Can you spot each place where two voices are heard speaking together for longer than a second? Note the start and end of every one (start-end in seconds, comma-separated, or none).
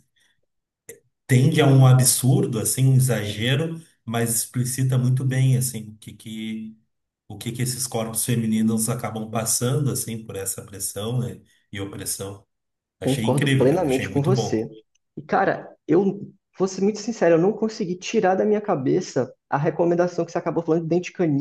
13.0-14.7